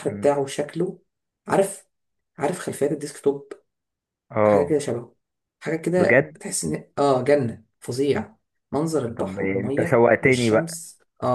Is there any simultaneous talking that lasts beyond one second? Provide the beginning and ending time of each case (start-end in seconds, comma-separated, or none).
9.2-10.8